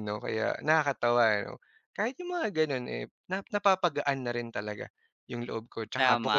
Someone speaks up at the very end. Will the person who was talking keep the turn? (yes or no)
no